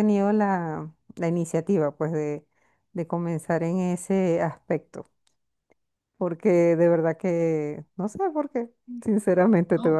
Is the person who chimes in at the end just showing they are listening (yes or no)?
yes